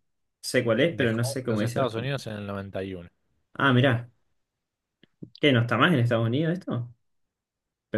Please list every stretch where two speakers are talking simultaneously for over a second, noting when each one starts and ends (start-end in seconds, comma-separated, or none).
0.9-2.2